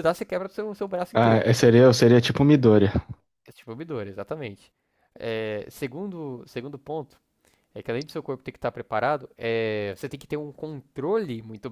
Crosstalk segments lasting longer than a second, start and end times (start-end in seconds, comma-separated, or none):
none